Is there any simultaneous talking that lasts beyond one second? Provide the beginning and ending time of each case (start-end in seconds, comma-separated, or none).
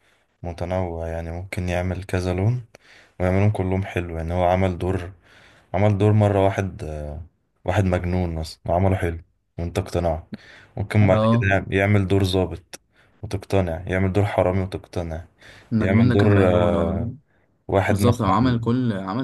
15.8-17.0